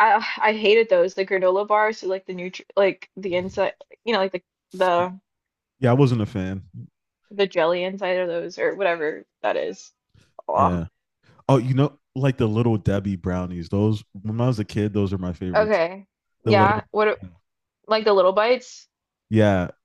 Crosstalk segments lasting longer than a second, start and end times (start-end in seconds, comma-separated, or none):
none